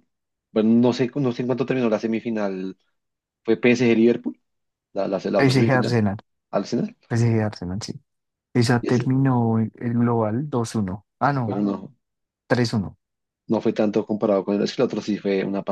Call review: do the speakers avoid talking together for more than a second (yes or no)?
yes